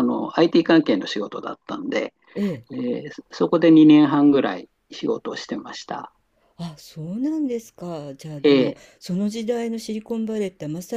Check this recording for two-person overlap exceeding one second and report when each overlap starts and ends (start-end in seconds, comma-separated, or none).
none